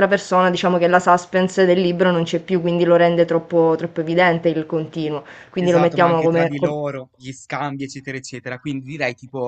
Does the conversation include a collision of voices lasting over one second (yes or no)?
yes